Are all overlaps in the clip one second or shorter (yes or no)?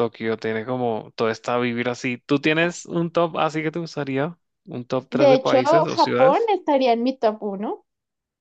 no